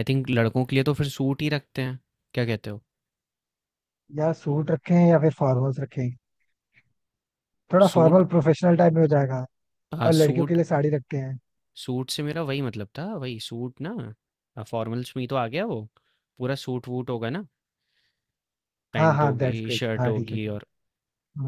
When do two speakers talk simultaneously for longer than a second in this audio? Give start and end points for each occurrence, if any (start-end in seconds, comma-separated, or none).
19.0-20.4